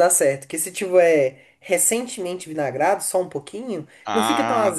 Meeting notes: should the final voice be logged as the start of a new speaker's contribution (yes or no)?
yes